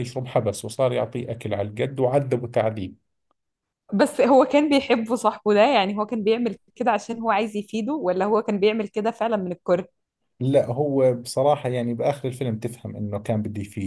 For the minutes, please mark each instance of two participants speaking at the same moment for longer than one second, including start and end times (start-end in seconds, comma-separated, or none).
none